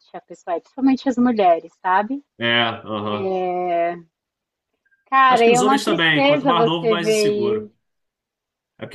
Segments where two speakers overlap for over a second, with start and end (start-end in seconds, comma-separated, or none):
5.3-7.7